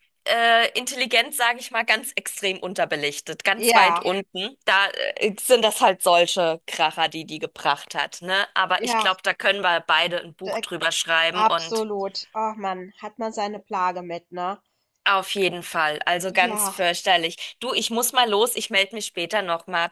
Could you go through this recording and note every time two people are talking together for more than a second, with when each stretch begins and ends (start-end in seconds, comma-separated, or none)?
none